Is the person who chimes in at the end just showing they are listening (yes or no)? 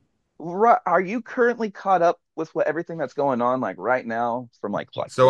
no